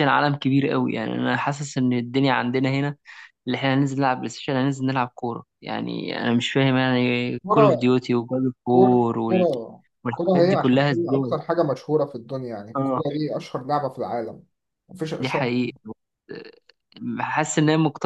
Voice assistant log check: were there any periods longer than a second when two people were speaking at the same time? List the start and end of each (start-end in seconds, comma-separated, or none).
10.1-11.3